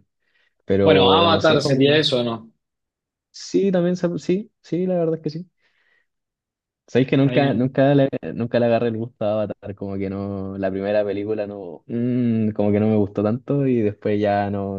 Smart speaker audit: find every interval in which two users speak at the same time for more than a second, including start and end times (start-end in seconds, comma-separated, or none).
0.8-2.1